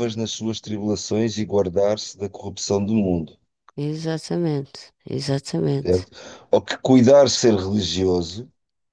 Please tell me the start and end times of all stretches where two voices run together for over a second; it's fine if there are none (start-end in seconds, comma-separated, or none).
none